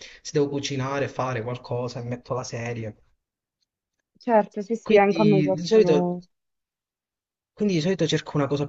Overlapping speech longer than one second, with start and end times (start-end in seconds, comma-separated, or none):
4.8-6.2